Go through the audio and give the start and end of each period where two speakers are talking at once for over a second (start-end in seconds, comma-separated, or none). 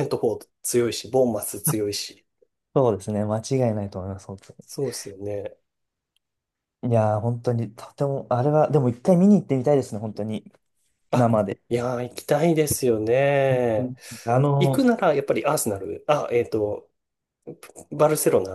none